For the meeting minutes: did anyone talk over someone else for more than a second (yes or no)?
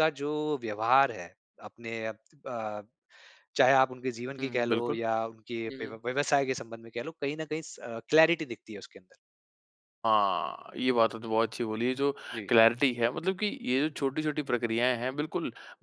no